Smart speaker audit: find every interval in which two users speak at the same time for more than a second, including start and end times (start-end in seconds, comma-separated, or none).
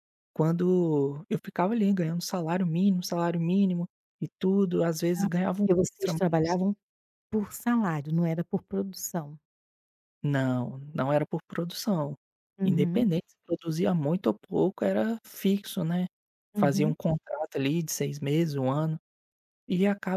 5.2-6.6